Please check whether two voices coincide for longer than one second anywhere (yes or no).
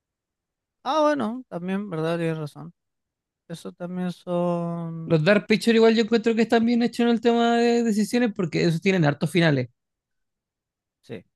no